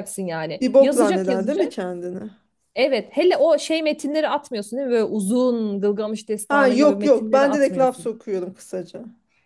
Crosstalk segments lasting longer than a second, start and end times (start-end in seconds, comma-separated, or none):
0.6-1.9, 6.5-8.1